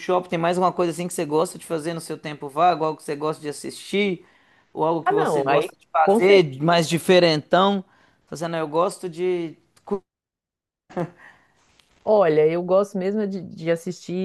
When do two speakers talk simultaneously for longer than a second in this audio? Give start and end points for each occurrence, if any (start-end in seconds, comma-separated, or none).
5.0-6.5